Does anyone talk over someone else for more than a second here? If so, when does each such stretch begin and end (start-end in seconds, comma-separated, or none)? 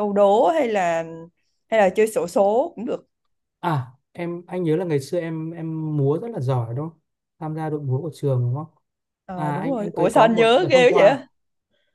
9.3-11.2